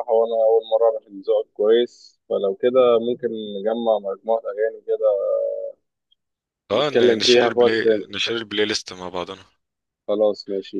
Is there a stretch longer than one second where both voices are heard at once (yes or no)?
yes